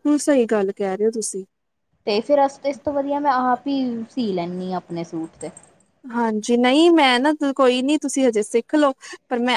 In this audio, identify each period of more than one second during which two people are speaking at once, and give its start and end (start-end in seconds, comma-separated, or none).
none